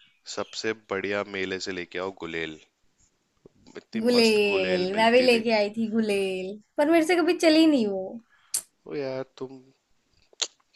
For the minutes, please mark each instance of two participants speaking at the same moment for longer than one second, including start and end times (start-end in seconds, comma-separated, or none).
4.0-5.4